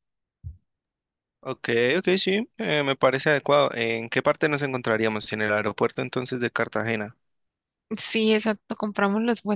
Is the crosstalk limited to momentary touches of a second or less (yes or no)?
yes